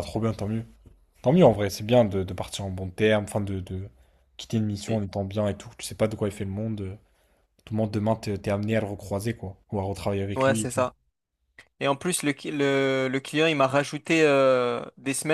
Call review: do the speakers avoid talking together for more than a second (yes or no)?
yes